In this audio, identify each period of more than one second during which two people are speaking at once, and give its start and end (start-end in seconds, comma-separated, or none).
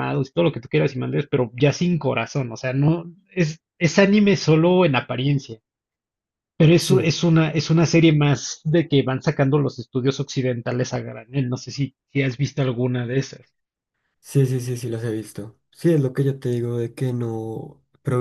none